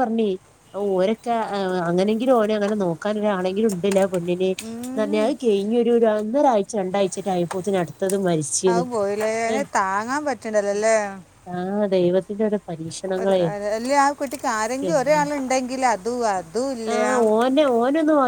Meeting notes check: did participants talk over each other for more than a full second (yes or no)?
no